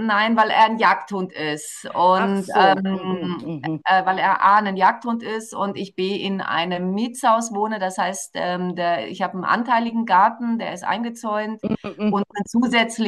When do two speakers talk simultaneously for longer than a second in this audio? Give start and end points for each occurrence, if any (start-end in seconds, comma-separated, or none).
2.1-3.8